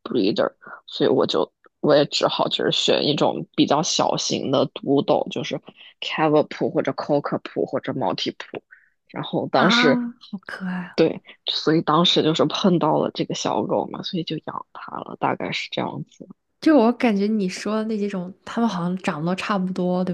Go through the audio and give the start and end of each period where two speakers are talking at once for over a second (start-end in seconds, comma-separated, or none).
none